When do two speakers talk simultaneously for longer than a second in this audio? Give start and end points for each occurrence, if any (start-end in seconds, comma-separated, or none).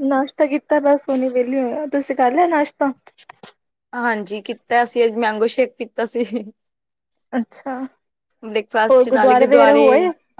none